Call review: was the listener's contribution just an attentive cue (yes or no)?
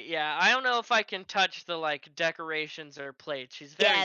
no